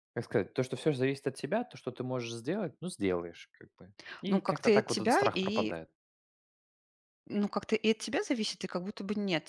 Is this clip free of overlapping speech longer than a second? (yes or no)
no